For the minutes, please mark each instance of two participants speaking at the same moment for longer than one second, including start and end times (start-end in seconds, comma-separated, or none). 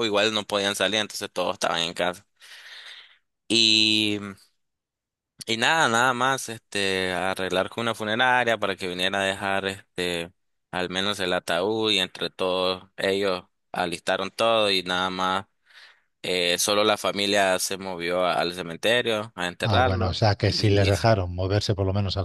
19.6-21.1